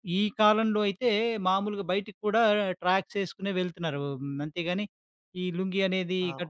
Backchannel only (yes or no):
yes